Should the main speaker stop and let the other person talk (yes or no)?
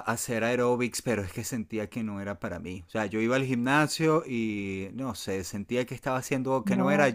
no